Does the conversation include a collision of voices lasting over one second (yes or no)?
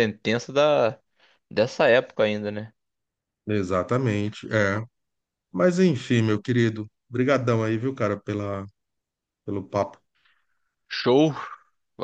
no